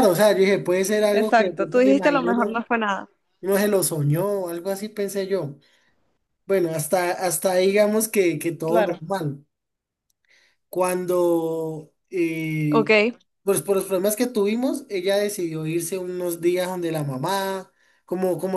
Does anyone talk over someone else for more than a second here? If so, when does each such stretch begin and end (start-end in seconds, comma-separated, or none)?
1.1-2.5